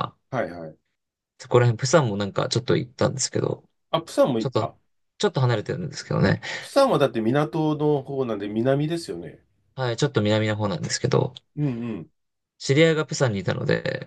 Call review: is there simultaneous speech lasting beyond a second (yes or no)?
no